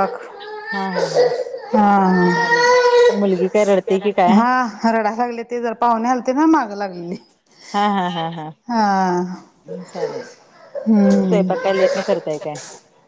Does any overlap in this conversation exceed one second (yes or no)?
no